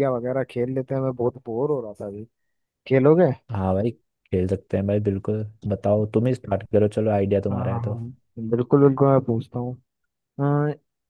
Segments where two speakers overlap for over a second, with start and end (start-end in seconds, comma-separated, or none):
none